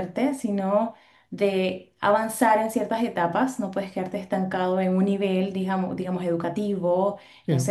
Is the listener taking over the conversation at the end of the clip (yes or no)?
no